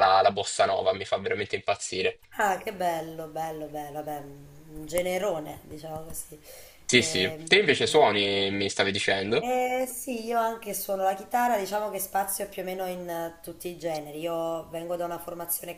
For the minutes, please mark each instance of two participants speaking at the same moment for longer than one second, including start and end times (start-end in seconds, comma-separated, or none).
none